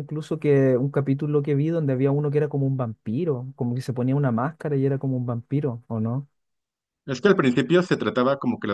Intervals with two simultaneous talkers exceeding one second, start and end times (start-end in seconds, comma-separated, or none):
none